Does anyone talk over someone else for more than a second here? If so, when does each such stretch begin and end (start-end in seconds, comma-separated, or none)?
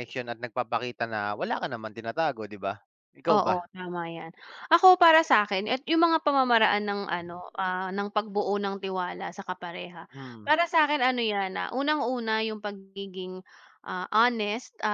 none